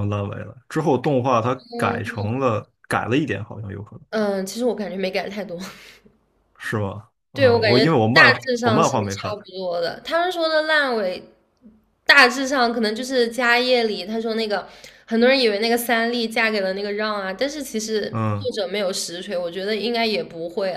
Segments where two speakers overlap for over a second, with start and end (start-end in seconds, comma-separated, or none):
7.3-9.4